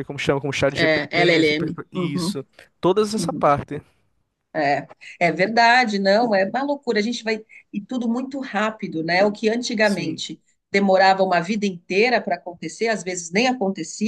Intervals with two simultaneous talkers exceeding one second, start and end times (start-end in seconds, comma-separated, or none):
0.7-2.4